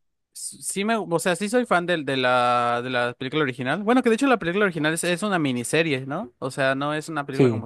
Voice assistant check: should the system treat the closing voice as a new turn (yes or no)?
no